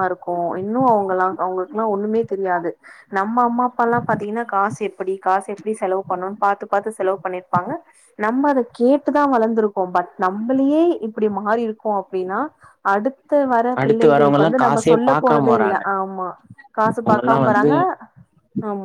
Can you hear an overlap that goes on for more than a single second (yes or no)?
yes